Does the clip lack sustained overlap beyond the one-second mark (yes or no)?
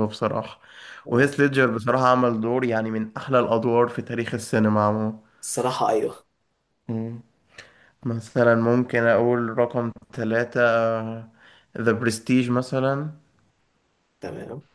yes